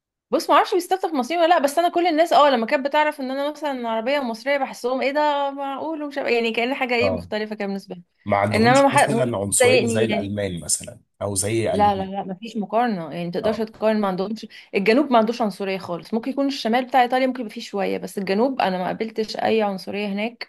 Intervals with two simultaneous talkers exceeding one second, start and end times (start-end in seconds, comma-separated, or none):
8.5-10.3